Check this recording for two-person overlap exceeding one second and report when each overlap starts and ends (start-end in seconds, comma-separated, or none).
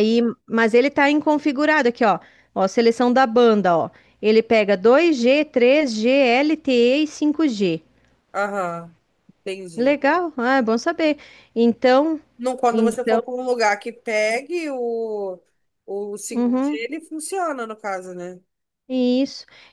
none